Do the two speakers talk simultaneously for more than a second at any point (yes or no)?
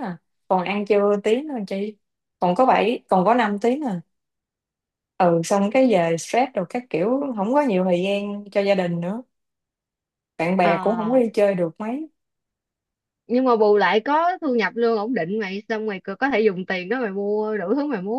no